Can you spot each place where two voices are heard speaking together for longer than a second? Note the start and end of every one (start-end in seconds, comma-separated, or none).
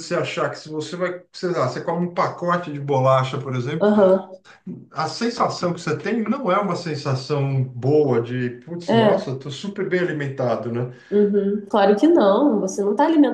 none